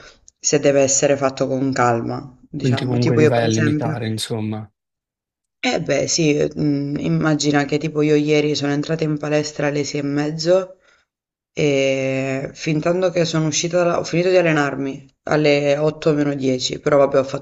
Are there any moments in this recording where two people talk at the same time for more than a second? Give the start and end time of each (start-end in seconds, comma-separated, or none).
2.6-4.0